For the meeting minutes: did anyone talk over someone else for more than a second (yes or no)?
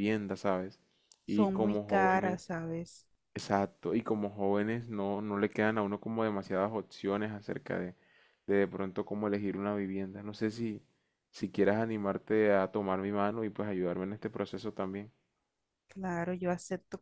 yes